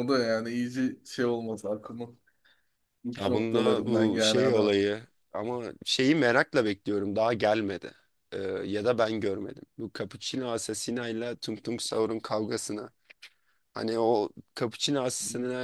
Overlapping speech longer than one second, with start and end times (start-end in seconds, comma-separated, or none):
3.2-4.8